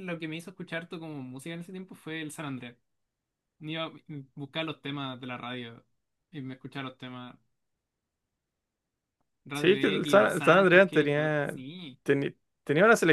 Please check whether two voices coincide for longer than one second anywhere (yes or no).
yes